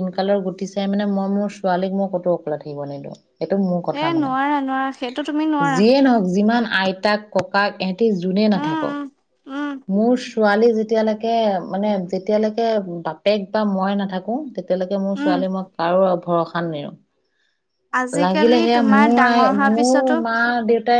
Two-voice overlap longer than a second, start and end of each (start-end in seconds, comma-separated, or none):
18.3-20.1